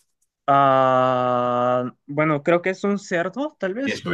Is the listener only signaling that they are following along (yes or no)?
no